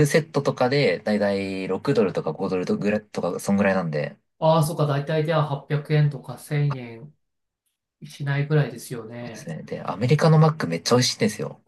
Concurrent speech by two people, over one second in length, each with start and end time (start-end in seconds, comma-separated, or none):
none